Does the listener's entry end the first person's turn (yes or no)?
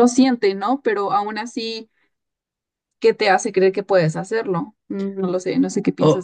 yes